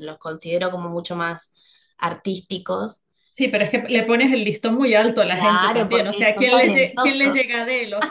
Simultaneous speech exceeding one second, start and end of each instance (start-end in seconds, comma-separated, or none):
5.3-7.5